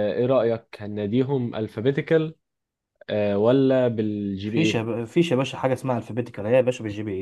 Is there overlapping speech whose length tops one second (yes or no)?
no